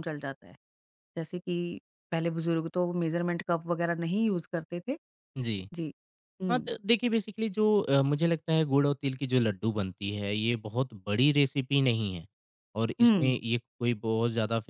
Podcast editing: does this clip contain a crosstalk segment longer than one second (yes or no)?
no